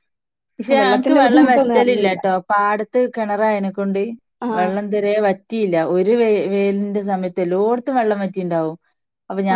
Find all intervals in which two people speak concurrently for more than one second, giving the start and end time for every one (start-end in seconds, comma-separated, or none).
0.8-2.2